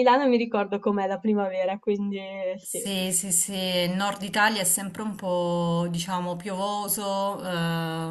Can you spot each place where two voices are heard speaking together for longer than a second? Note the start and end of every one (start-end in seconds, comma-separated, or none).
none